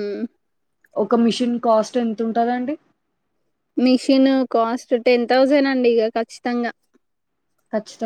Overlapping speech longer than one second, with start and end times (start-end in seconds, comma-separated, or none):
none